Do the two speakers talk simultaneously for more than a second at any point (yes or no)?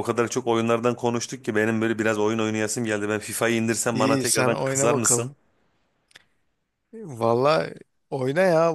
yes